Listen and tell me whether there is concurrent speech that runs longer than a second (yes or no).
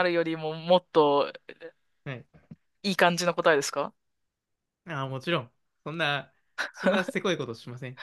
no